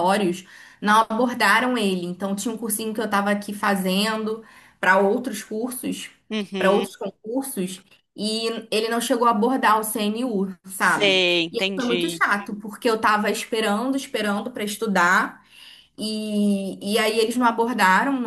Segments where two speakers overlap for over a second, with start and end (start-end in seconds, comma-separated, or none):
10.8-12.2